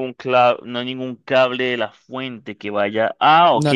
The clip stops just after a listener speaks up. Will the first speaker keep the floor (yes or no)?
yes